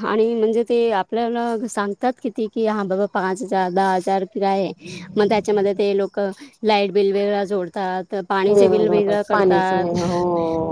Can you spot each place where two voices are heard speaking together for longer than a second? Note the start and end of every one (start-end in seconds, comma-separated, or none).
8.5-9.9